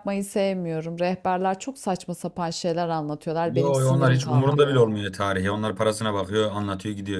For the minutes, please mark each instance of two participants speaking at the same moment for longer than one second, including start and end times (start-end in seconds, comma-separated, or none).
3.6-4.9